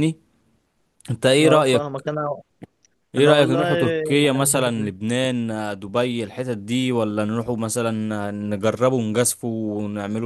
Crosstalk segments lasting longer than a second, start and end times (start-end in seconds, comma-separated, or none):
3.2-4.9